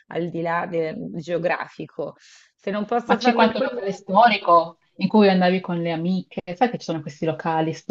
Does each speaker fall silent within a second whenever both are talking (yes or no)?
no